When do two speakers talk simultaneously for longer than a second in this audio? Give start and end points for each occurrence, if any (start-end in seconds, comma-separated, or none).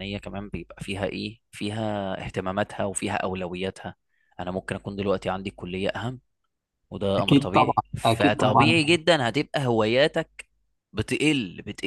7.2-8.7